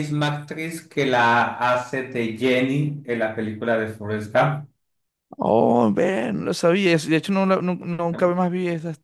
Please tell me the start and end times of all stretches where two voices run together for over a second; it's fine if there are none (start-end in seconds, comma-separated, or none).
none